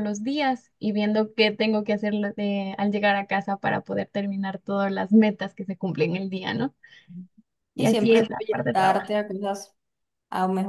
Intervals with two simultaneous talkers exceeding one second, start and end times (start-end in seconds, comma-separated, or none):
7.8-9.1